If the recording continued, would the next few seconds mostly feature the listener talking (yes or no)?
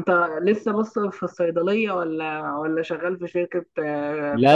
yes